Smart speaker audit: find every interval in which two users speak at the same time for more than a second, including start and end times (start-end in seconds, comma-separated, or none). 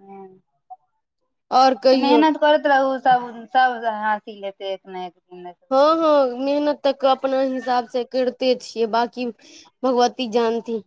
none